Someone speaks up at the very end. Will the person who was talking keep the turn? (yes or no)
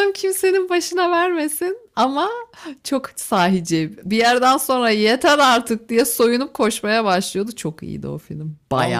no